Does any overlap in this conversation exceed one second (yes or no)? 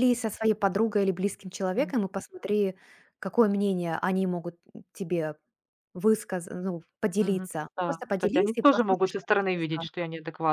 yes